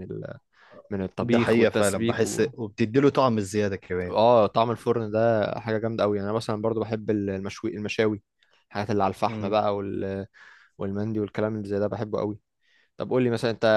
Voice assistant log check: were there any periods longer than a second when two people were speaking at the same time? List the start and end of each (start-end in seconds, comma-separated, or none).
1.2-2.5